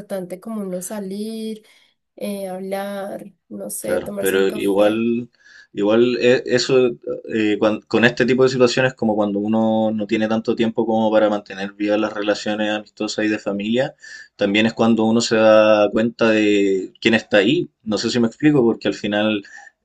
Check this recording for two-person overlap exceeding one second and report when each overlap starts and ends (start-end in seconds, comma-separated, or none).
3.8-5.0